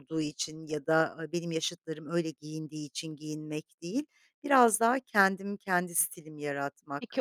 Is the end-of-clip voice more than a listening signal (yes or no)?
yes